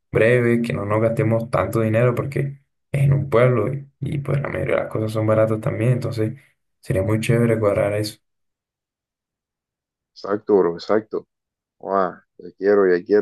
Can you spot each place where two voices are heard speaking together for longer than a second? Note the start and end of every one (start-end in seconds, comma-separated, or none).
none